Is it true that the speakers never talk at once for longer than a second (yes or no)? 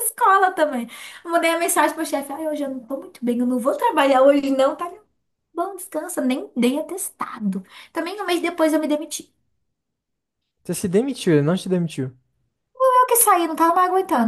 yes